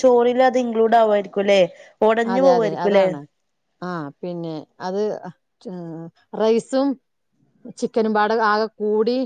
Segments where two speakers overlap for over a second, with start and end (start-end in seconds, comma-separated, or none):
none